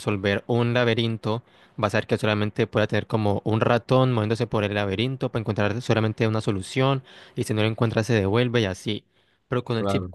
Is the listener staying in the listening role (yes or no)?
yes